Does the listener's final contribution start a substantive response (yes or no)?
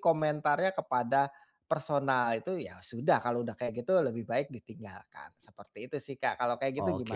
yes